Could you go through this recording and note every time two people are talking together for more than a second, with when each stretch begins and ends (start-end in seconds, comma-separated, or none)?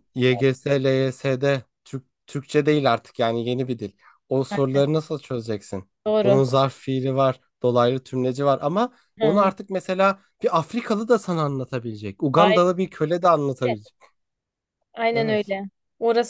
none